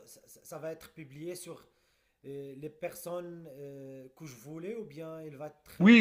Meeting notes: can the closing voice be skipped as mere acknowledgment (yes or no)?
no